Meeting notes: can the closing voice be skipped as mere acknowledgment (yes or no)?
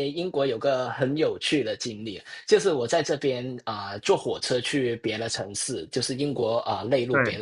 yes